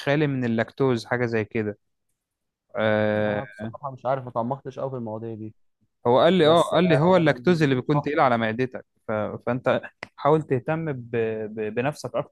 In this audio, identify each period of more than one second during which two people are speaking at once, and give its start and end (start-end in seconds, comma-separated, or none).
6.4-8.3